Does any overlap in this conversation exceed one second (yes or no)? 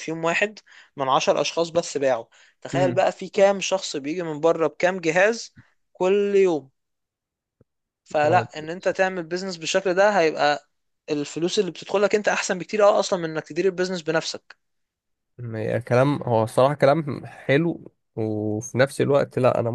no